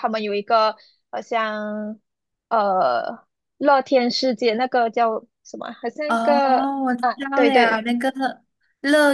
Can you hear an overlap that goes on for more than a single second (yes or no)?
yes